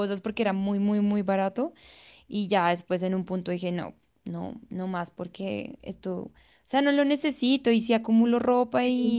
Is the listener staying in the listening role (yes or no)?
yes